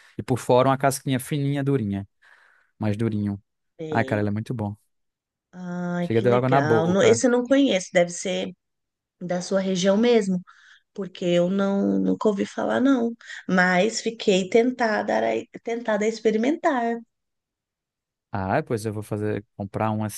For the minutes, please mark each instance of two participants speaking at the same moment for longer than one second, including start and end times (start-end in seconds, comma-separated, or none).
6.0-7.2